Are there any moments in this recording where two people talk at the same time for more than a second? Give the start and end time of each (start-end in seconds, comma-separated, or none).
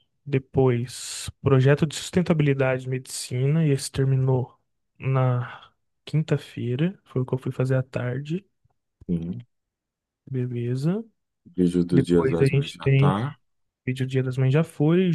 11.9-13.2